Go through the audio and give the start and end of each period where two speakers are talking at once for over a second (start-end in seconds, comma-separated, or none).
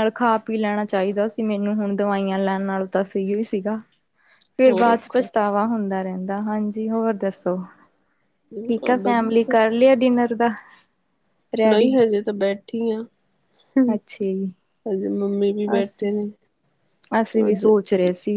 none